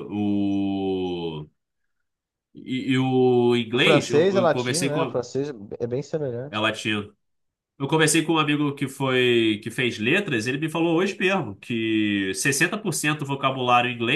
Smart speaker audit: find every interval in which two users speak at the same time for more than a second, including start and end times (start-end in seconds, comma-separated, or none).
3.7-5.2